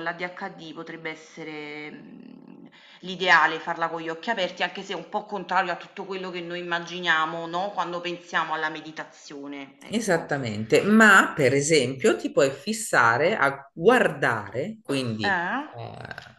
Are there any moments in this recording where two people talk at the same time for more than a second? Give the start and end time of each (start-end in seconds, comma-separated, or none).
none